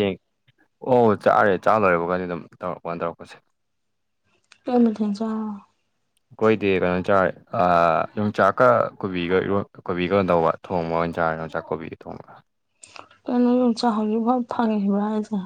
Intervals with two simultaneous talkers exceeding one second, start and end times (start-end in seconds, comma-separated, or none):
none